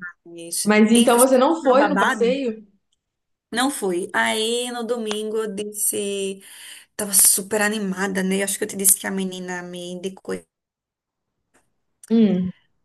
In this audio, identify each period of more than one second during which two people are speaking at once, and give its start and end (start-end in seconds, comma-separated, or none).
0.6-2.4